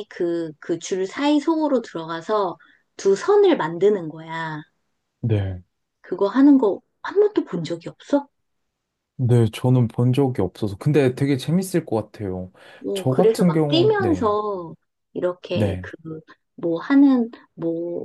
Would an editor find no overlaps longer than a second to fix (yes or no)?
no